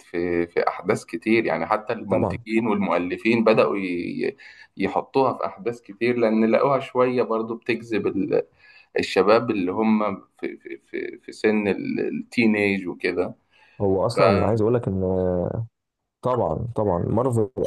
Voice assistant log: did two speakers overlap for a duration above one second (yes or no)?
no